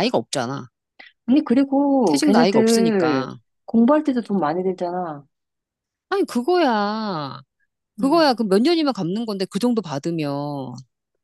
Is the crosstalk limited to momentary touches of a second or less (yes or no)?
no